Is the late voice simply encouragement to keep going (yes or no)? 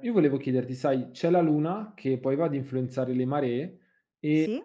yes